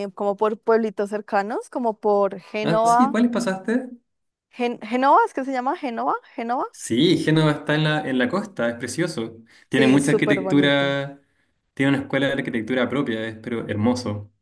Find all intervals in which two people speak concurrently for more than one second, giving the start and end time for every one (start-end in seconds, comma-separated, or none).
9.7-10.9